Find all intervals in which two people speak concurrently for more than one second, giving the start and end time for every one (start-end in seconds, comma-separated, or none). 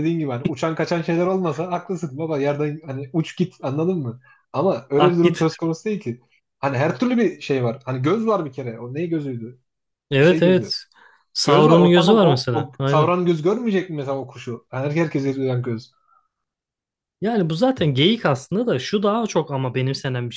11.4-13.1